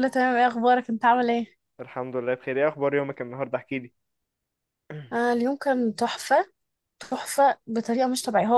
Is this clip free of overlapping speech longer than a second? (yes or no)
yes